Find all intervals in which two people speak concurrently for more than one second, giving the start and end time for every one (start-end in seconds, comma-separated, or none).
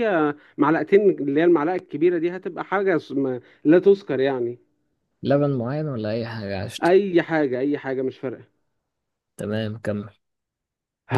none